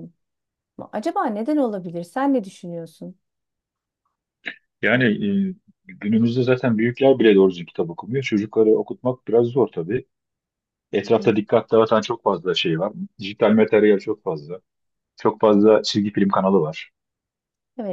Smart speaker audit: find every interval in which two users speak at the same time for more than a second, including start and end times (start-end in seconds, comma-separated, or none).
none